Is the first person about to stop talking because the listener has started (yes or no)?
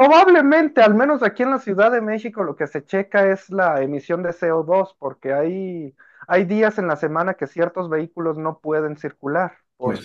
yes